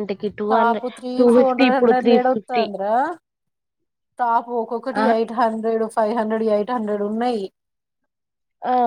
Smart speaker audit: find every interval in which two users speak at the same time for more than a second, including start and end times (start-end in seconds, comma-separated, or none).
0.5-2.6